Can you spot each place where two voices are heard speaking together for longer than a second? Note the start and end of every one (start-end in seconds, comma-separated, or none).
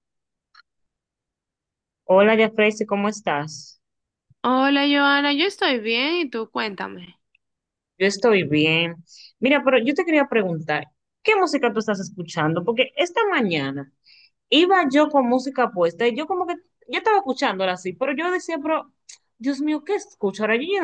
none